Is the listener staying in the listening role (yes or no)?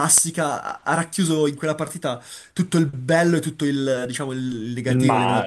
yes